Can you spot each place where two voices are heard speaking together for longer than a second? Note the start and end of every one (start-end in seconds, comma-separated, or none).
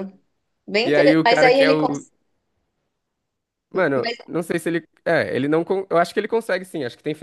0.8-2.0